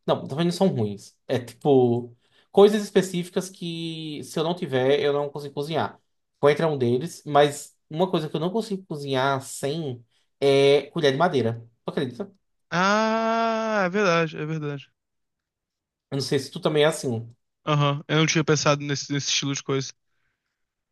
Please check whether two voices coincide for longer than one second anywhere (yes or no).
no